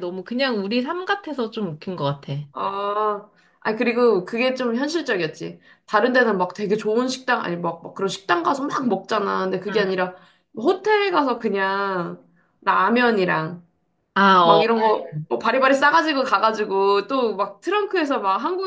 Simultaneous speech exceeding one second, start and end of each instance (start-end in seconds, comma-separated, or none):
none